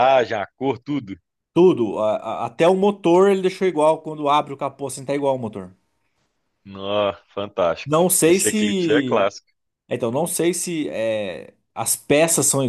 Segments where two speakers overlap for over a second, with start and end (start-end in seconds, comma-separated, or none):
7.8-9.3